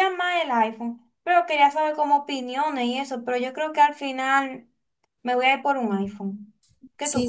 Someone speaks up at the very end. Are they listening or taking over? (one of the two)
taking over